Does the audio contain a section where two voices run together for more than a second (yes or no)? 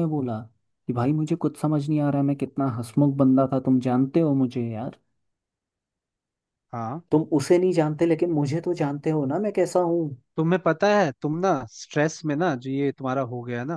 no